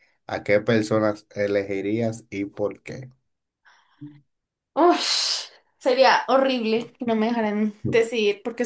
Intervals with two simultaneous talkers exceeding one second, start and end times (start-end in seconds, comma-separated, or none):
none